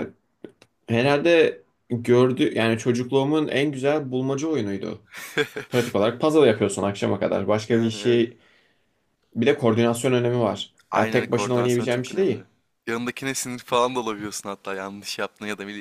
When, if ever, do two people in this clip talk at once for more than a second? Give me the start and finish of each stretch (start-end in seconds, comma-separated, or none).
10.9-12.4